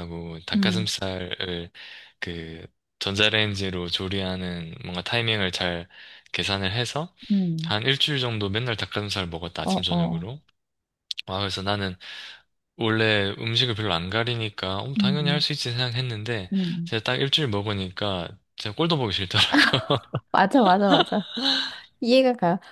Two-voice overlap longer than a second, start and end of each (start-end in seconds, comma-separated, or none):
none